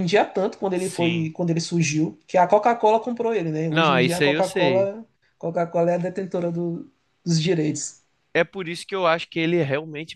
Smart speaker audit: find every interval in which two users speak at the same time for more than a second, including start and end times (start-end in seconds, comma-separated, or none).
3.7-4.9